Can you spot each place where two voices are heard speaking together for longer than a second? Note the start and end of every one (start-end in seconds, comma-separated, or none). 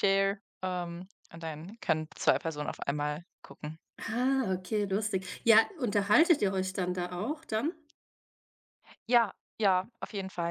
none